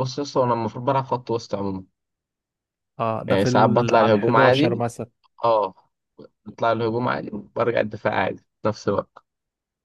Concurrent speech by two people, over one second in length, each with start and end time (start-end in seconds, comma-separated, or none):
3.3-4.8